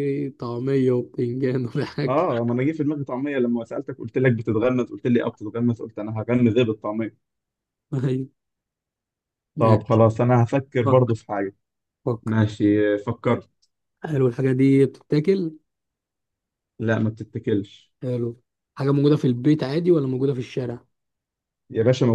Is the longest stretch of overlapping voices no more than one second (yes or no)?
yes